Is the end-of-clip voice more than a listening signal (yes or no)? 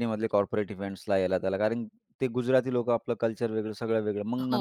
no